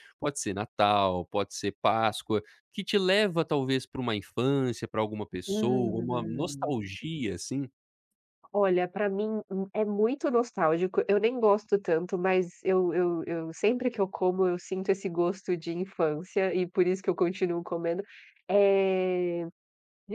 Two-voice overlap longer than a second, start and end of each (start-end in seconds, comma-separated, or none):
5.5-6.8